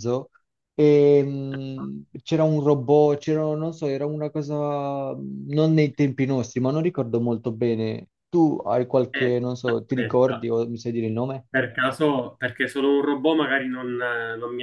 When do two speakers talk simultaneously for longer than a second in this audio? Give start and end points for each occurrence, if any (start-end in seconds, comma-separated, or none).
9.1-10.5